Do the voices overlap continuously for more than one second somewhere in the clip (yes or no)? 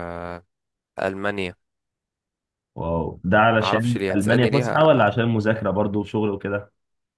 yes